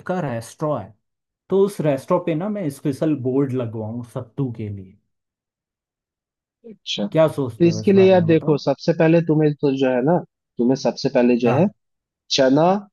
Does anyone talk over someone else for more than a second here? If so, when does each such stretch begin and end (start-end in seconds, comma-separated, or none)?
7.1-8.6